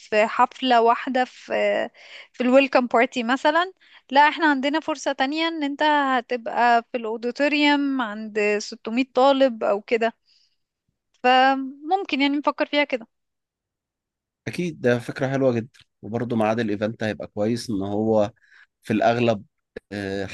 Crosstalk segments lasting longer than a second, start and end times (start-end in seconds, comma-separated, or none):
none